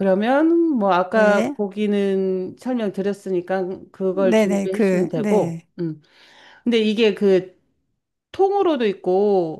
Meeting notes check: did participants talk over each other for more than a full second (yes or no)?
yes